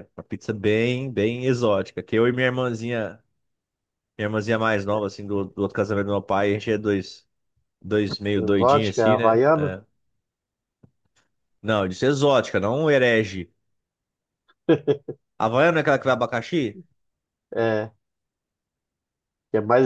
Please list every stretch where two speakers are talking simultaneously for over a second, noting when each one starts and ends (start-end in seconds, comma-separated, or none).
8.4-9.8